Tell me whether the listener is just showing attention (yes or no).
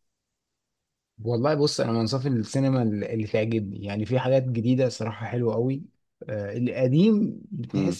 yes